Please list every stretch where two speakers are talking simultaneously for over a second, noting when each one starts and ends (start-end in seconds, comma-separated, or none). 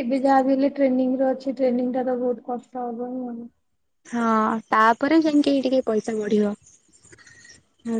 none